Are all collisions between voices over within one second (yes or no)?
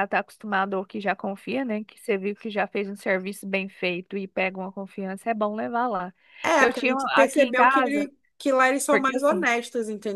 no